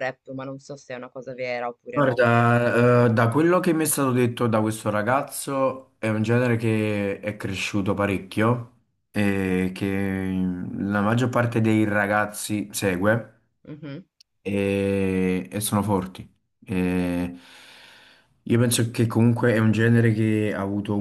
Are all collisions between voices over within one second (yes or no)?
yes